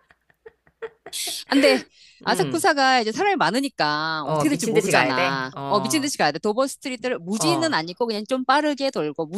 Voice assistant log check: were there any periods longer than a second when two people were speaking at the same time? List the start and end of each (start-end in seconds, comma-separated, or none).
4.2-6.1